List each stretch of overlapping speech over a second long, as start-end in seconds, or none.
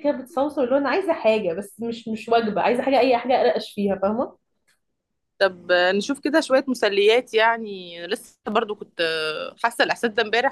none